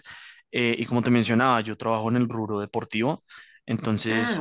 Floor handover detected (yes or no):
no